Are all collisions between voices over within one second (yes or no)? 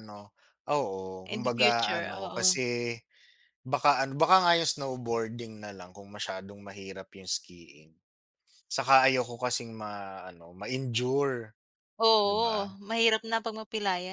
no